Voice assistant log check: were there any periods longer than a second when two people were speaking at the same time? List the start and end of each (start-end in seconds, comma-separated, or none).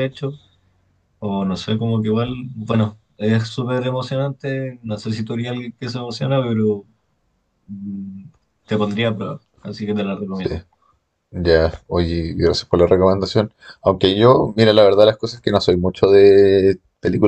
none